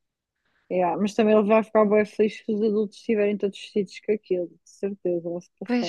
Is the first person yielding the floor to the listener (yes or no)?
yes